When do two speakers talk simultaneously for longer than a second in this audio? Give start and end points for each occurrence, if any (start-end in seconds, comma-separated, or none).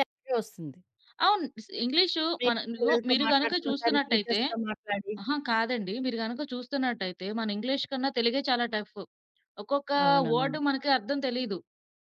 2.4-4.4